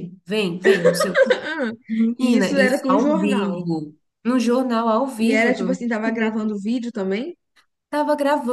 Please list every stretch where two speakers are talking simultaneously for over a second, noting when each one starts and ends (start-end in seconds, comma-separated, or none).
2.2-3.7